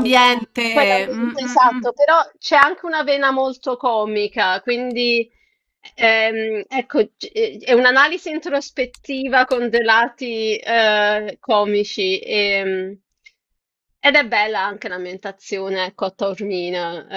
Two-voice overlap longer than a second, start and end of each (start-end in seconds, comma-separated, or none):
0.7-1.9